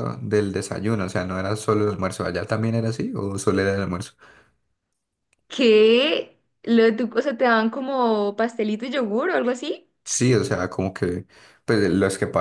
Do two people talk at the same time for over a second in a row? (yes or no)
no